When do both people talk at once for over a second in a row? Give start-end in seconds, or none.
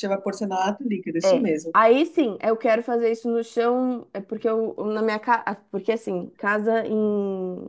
none